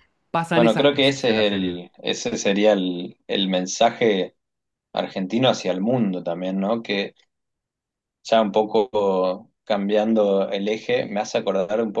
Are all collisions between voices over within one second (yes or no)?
no